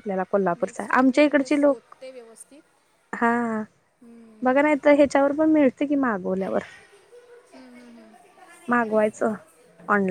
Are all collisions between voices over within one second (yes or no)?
no